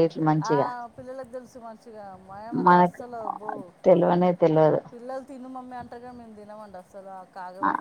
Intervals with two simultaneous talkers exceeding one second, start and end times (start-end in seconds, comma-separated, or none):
none